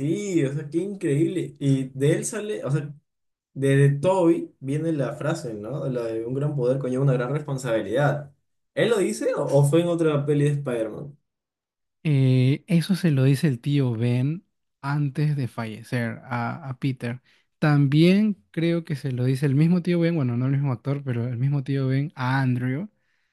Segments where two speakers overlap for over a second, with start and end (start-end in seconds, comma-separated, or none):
none